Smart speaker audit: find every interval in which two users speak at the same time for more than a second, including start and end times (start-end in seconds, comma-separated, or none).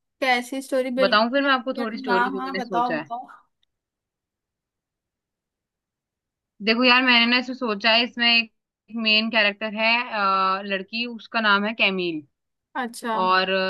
1.0-3.1